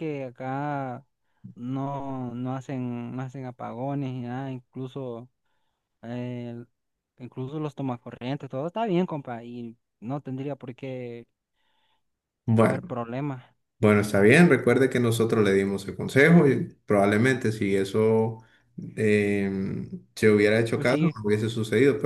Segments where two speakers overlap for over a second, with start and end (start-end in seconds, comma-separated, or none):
none